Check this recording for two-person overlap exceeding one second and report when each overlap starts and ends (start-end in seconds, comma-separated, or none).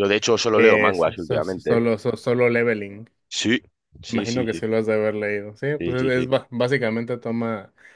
0.5-1.8